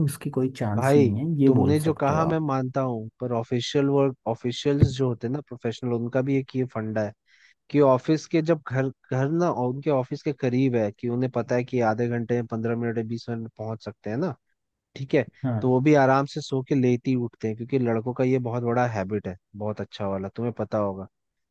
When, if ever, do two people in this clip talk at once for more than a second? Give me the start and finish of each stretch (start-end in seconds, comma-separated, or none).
0.8-2.4